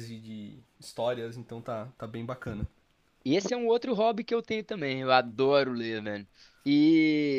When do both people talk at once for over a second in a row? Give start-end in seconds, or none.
none